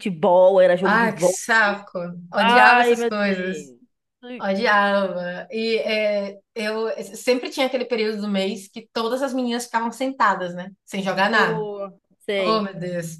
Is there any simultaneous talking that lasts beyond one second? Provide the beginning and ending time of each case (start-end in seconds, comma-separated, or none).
2.4-3.7